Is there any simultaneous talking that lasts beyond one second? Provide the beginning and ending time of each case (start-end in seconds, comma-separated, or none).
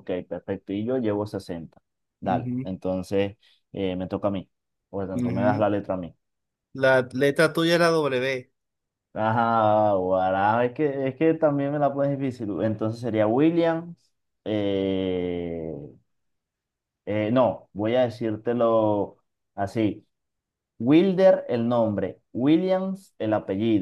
none